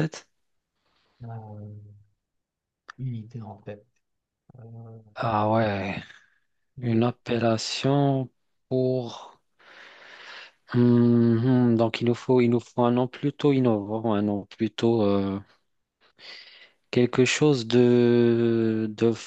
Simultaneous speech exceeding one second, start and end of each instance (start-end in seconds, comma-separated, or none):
none